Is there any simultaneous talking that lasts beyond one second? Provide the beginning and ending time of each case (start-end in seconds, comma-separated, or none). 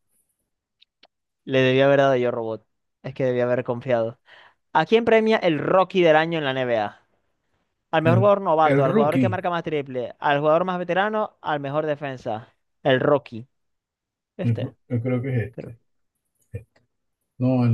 8.0-9.4